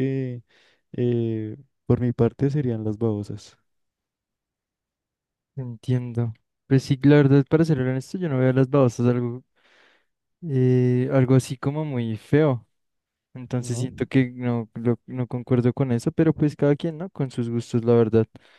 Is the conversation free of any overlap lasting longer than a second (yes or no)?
yes